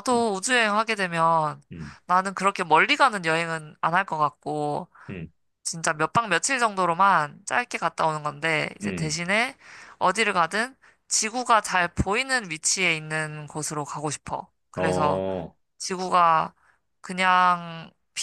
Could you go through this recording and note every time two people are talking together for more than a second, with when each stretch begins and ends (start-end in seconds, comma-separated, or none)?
none